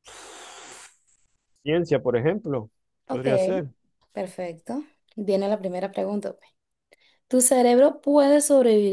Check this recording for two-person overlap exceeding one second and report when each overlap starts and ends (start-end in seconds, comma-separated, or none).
none